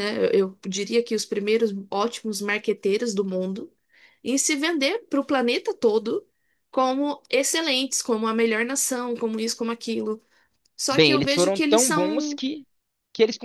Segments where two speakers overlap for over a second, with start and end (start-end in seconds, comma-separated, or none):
10.9-12.4